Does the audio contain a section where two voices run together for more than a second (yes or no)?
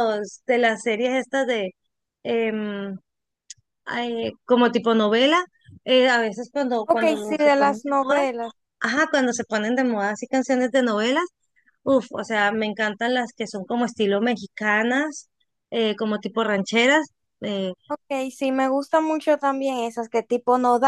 yes